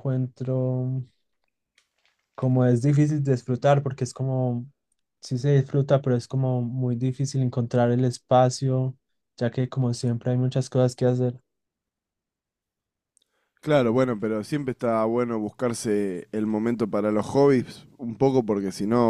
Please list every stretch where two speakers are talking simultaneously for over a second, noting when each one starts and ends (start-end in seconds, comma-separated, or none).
none